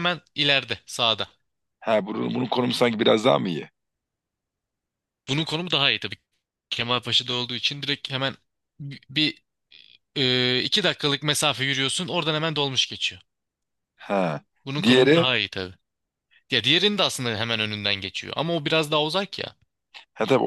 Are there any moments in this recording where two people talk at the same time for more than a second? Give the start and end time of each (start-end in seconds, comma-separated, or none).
none